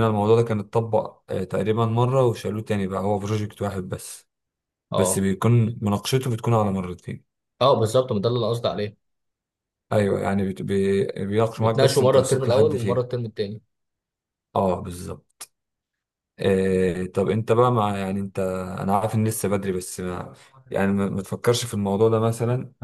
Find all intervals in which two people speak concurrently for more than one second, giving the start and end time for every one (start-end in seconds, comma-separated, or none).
11.6-13.0